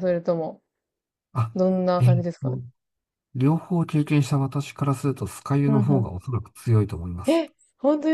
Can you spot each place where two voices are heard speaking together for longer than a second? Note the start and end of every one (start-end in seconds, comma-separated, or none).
none